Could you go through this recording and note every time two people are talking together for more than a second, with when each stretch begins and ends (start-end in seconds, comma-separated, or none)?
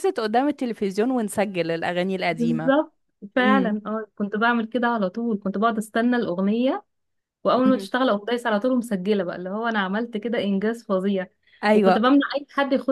none